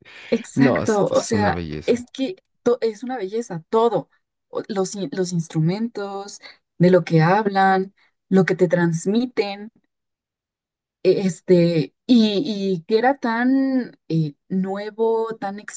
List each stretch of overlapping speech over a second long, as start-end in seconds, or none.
0.5-2.0